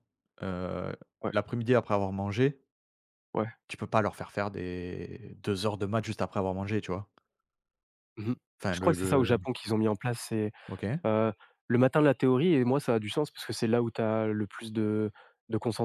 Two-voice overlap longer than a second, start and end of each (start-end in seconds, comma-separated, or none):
none